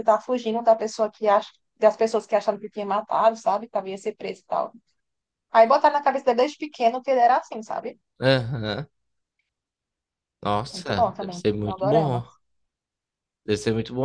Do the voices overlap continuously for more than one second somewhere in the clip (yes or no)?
yes